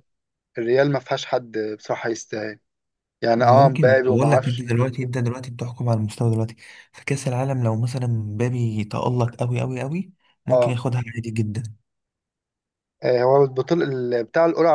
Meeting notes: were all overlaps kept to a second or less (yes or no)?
no